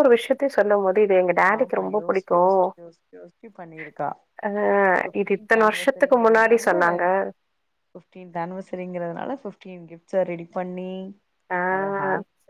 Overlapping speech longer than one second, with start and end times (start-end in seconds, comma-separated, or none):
5.2-6.7